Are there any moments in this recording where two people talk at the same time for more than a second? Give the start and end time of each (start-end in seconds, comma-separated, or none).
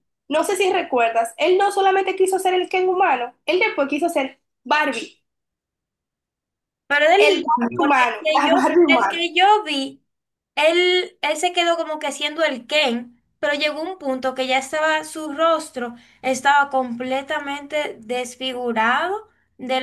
7.1-9.2